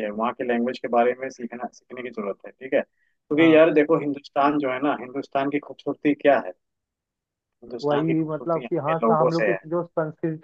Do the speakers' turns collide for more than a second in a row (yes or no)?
yes